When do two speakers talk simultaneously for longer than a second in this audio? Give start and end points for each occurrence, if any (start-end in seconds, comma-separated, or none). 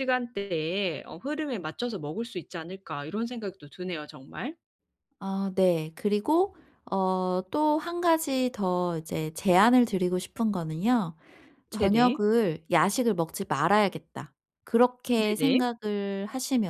none